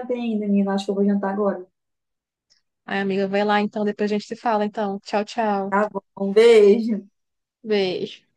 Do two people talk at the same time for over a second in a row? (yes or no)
no